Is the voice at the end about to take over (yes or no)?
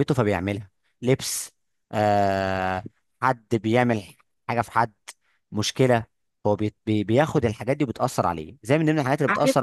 no